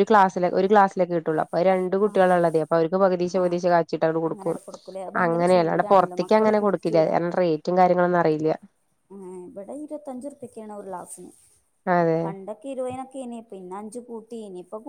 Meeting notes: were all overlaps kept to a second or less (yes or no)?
no